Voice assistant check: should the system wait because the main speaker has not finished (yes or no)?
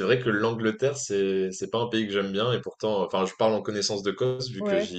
yes